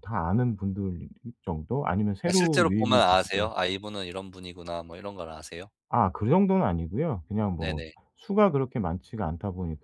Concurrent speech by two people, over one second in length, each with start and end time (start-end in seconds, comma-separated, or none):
2.2-3.5